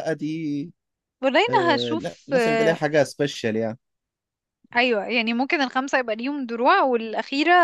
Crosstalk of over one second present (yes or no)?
yes